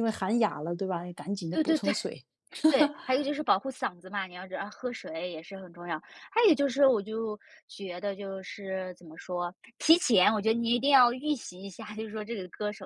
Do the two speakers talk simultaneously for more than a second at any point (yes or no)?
no